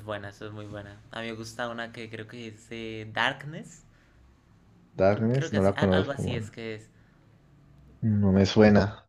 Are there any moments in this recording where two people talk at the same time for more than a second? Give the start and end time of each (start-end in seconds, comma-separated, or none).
5.1-6.5